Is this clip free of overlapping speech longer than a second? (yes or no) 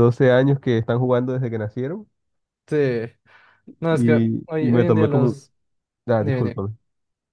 no